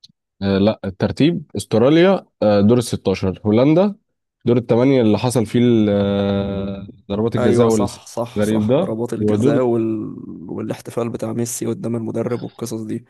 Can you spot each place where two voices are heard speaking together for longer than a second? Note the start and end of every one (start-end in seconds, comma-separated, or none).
7.4-9.6